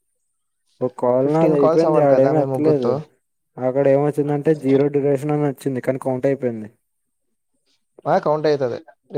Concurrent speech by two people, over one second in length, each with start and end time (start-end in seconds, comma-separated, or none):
1.2-2.9